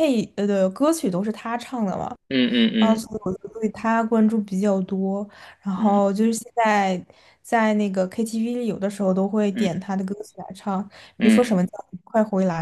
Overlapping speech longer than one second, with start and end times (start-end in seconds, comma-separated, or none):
none